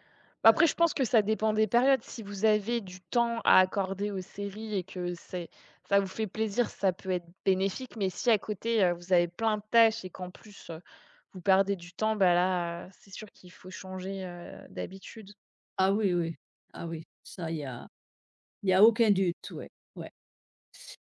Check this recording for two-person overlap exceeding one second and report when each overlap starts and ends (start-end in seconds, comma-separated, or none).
none